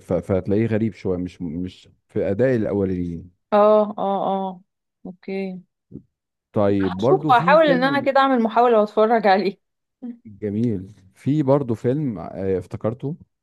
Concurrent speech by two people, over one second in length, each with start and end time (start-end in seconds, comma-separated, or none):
6.8-8.1